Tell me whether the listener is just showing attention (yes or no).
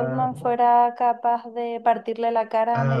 no